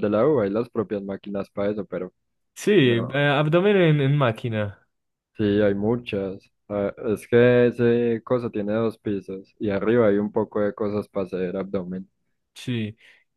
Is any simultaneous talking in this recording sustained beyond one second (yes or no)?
no